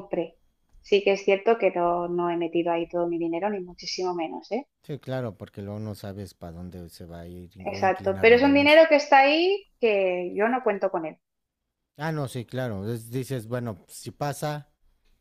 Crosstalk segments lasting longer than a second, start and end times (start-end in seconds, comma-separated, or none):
7.6-8.8